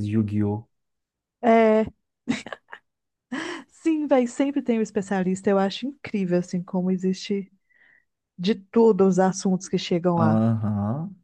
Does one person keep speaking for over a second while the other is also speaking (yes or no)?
no